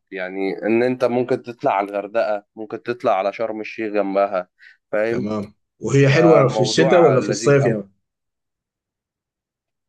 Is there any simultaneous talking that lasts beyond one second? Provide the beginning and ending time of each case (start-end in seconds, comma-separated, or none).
6.1-7.8